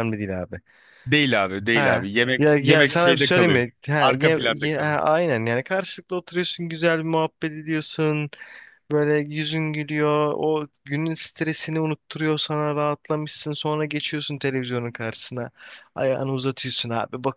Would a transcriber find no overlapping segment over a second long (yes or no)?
no